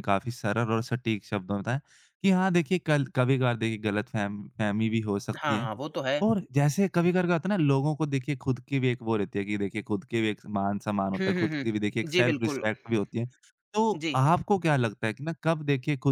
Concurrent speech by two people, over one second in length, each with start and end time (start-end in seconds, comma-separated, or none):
11.2-12.6